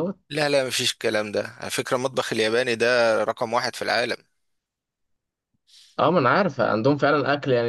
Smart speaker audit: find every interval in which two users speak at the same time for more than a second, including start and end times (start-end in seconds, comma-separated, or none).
none